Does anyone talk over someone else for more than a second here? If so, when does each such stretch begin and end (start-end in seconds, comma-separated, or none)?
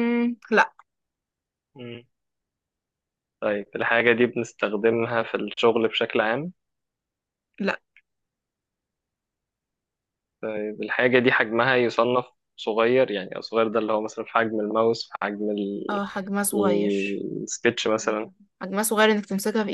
none